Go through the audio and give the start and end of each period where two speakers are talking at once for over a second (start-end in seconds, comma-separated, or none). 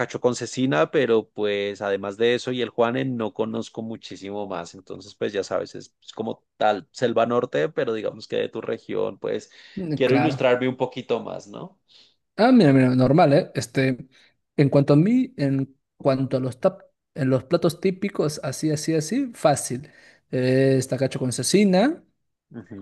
none